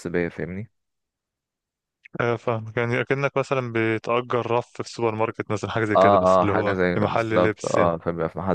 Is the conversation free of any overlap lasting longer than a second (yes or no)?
no